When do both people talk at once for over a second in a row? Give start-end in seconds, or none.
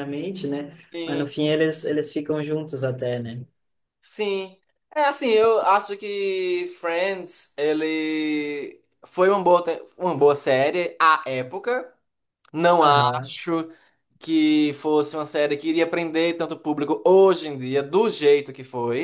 none